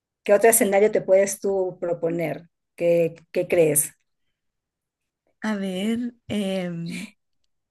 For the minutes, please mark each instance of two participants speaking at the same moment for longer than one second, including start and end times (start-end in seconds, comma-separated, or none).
none